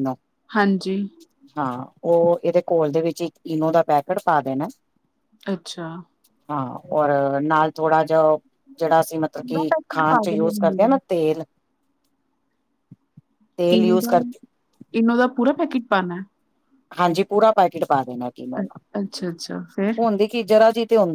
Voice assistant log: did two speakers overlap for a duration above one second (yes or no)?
yes